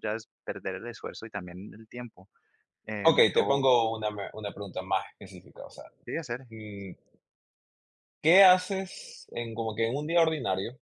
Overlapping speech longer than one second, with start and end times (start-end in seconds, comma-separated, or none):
none